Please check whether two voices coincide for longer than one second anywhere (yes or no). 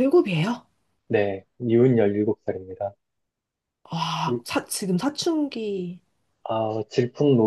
no